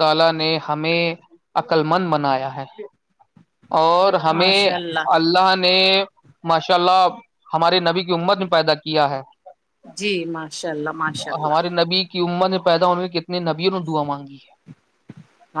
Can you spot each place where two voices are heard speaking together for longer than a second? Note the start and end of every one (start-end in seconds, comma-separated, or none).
none